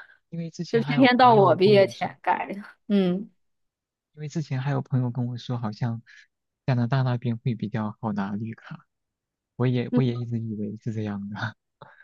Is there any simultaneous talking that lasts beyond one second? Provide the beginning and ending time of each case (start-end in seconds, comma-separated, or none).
0.7-2.1